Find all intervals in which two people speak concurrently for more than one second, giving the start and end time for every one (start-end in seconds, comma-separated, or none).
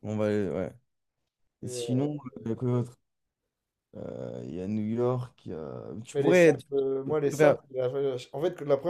6.1-7.6